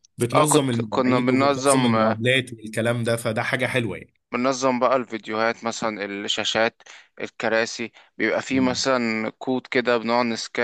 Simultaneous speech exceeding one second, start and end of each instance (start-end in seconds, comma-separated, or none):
0.7-2.2